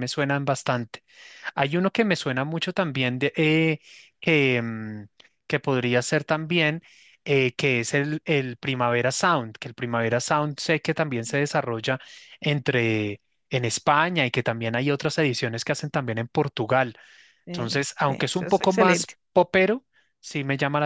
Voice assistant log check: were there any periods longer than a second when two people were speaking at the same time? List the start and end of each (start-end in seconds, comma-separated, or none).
17.5-19.1